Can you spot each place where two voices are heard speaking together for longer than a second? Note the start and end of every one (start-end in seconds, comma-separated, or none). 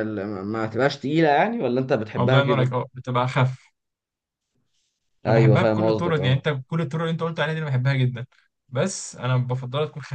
5.2-6.5